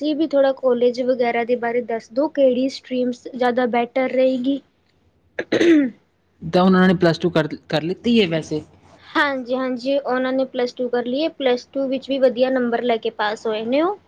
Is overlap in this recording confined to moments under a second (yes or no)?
yes